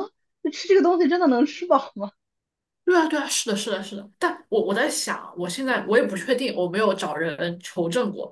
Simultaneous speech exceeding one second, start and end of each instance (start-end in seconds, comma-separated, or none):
none